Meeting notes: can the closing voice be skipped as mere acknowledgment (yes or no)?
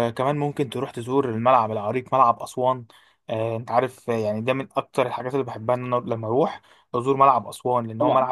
no